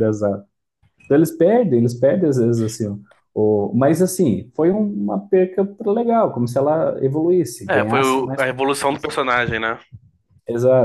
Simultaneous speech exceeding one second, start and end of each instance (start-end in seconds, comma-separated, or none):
7.7-9.1